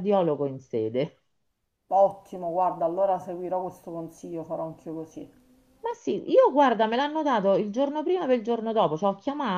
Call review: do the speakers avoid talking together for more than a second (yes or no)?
yes